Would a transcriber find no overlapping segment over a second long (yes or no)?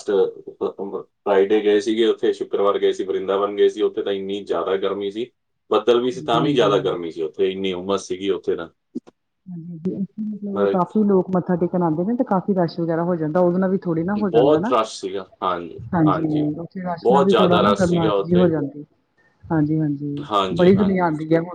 no